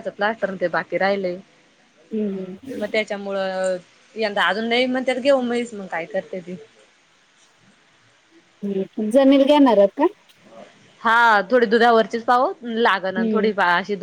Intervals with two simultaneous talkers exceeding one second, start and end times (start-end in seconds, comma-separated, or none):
none